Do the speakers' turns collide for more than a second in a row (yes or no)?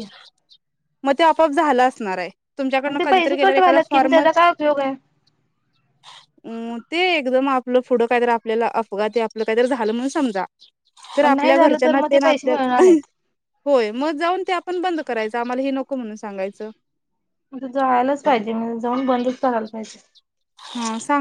yes